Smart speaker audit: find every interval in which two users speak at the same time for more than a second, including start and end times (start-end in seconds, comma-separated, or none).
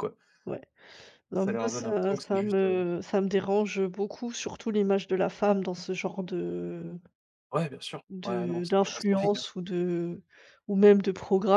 1.3-2.9, 8.1-9.4